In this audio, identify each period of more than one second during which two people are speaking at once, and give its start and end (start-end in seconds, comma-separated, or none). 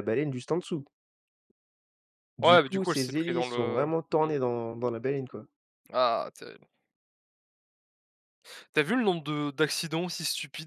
2.4-4.3